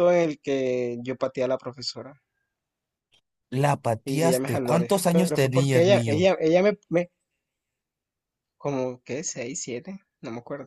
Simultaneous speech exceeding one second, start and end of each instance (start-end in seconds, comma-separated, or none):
4.0-6.3